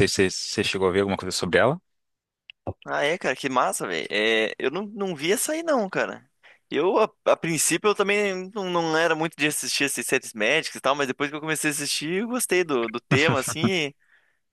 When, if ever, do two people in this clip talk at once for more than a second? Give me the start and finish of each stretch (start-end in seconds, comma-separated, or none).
none